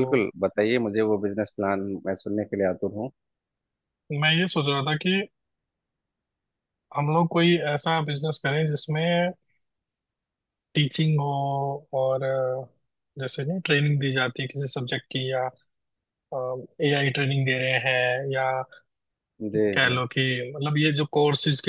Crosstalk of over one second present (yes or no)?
no